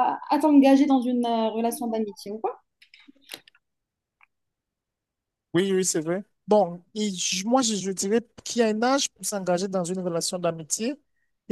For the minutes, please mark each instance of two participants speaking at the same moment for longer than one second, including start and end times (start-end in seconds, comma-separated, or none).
none